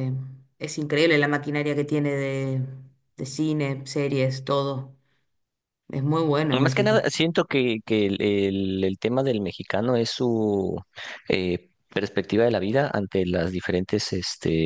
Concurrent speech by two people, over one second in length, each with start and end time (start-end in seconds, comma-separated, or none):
none